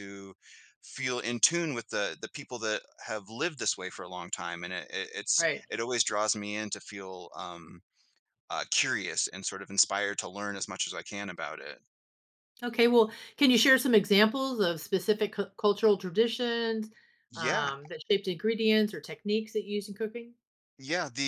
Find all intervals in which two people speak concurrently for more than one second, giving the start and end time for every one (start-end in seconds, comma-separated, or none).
none